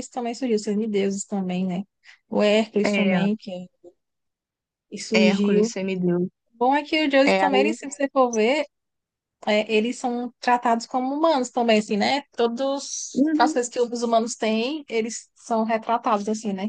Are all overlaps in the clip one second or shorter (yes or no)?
yes